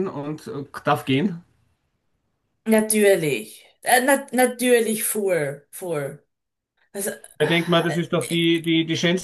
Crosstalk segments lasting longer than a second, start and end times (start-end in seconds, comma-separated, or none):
none